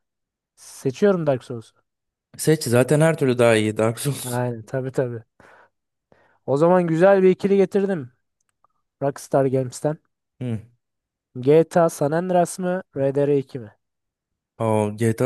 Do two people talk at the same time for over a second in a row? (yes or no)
no